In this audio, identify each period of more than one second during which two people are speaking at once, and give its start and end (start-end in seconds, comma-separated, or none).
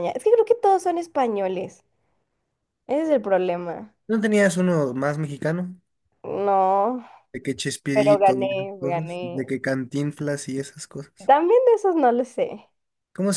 7.9-9.4